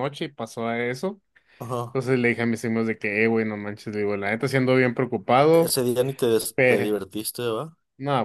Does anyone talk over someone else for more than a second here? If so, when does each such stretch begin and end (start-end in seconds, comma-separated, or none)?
none